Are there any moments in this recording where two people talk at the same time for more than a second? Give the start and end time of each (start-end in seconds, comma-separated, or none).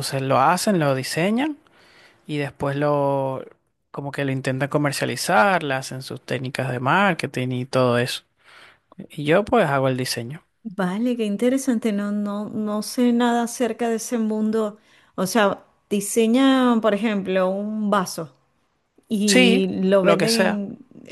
19.2-20.6